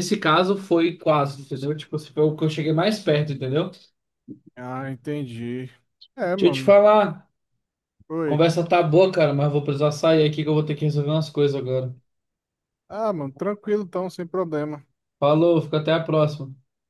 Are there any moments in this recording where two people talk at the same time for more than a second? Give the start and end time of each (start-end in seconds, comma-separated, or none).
none